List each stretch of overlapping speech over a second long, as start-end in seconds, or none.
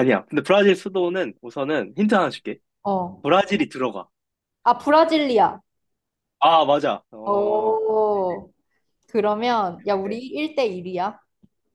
none